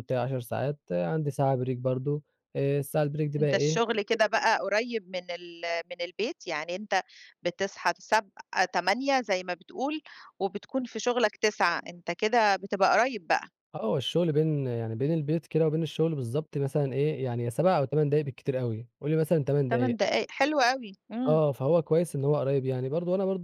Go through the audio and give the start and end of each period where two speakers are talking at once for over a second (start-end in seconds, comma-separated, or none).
none